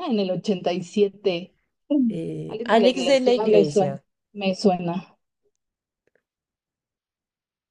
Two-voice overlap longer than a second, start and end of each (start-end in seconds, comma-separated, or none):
2.5-4.0